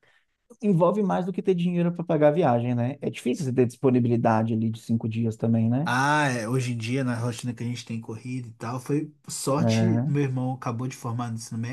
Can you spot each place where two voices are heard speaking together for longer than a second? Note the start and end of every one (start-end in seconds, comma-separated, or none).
none